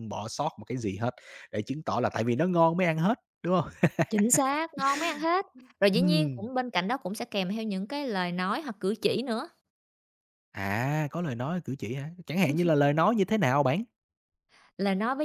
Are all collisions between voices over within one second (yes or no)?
yes